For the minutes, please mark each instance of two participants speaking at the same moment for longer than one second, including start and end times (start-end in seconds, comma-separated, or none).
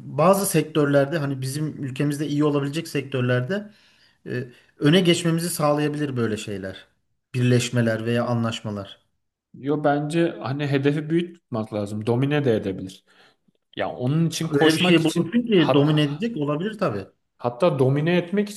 14.5-16.1